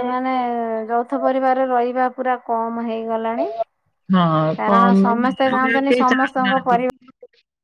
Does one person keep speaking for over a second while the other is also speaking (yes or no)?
yes